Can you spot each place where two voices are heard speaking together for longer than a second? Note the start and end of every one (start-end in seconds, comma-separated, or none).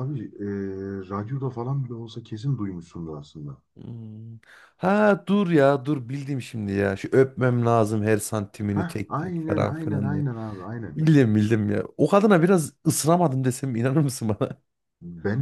8.7-10.2